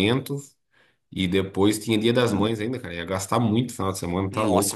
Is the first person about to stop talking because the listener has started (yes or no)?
yes